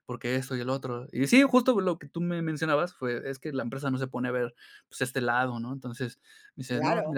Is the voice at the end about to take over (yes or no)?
no